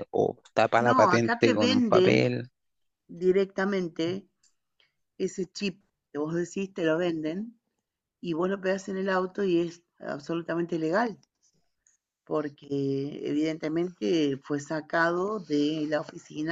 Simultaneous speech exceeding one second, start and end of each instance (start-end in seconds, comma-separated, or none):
0.8-2.3